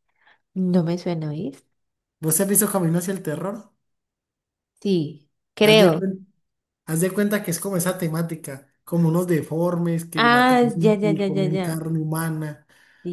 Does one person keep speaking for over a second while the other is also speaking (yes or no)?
yes